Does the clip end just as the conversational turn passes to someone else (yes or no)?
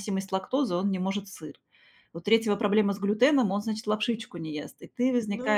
no